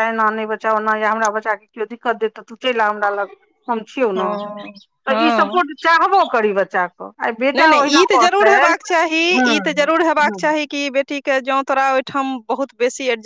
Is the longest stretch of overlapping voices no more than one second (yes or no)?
yes